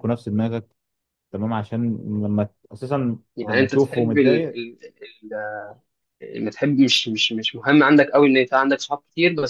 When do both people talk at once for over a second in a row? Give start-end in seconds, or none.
3.4-4.6